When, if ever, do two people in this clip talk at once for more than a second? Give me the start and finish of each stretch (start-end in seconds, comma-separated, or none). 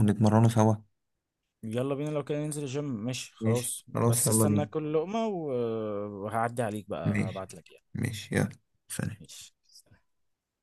3.4-4.7